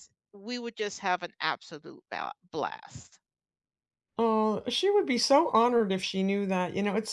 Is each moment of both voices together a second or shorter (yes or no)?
yes